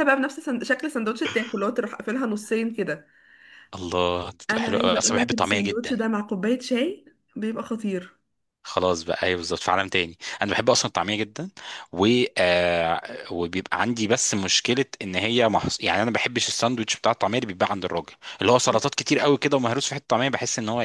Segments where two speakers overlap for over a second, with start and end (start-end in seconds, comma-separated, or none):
4.5-6.0